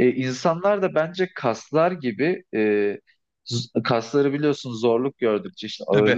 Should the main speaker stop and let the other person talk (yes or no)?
no